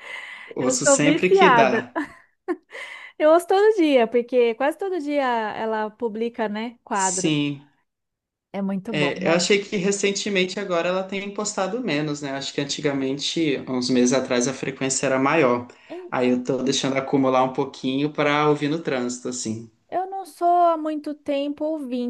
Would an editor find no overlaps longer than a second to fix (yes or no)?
no